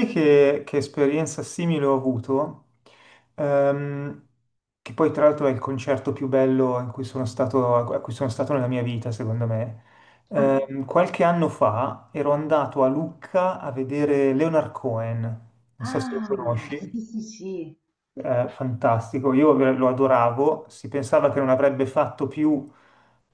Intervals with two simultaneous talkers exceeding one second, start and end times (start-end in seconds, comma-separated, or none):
15.8-17.1